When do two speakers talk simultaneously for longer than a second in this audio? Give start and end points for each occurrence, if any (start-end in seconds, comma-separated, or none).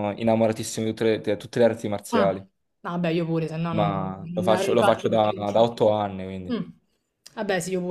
3.7-5.4